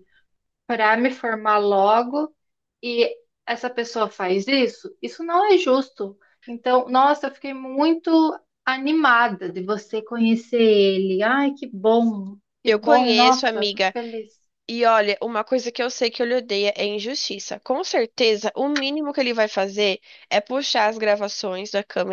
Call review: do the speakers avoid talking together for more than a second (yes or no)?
no